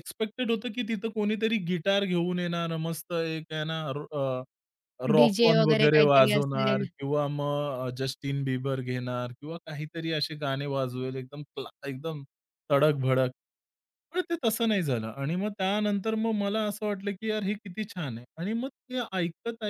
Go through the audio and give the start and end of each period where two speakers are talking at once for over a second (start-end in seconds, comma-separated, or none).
5.2-6.8